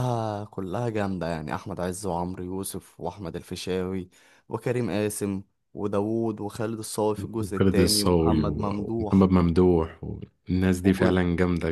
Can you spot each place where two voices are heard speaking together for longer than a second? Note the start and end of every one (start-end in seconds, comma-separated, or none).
7.4-9.3